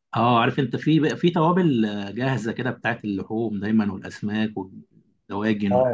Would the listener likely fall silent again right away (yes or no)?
no